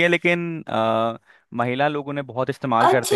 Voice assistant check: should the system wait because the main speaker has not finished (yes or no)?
no